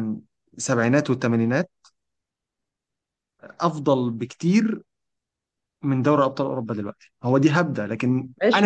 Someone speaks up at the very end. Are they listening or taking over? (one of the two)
taking over